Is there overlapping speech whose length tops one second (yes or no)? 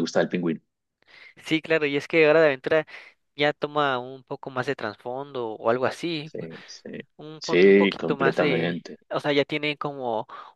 yes